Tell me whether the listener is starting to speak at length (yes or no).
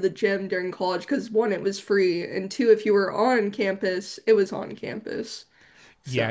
yes